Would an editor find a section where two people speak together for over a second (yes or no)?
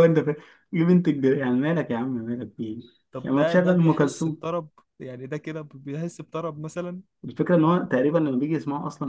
yes